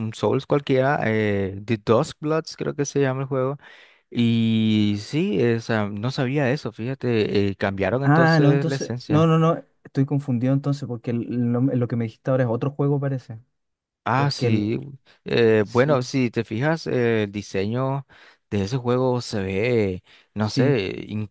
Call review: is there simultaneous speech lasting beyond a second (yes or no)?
yes